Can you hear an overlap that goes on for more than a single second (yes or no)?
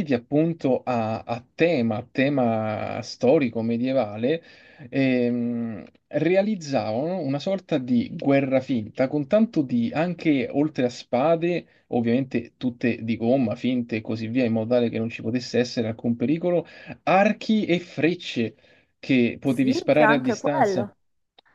yes